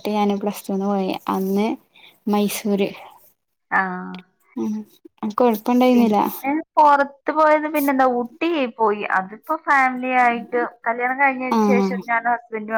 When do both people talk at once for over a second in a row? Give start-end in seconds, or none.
none